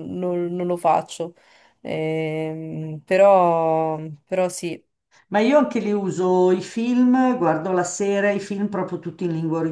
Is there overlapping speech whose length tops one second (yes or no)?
no